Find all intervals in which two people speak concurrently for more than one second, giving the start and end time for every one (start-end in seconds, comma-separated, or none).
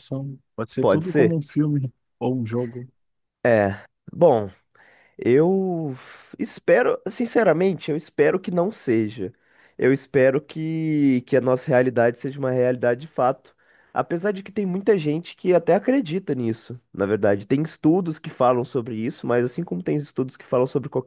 none